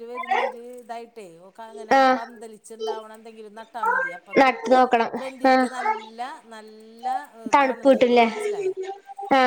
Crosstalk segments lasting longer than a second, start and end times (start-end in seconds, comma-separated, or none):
none